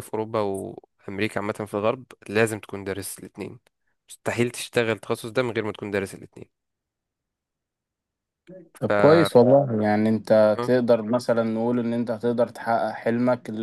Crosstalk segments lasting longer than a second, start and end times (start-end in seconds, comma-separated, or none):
none